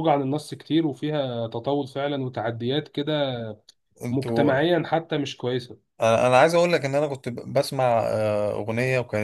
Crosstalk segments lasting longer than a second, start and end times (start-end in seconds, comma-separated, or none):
none